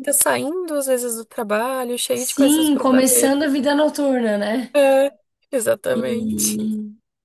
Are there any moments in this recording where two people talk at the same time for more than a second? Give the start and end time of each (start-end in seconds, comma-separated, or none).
2.1-3.3